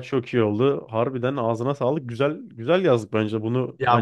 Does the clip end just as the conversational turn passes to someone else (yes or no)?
yes